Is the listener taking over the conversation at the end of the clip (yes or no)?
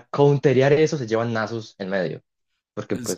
no